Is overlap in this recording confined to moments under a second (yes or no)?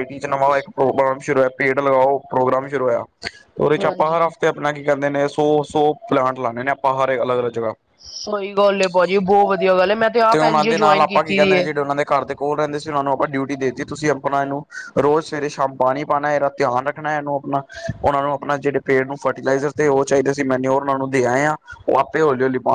no